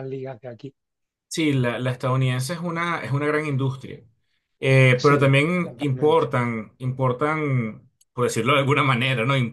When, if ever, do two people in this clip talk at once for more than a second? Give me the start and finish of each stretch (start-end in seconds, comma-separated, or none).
4.9-6.3